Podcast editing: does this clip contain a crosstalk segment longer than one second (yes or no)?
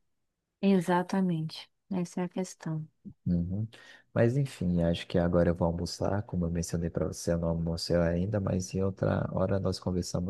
no